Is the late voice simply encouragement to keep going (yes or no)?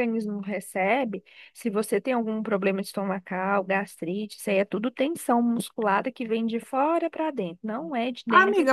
no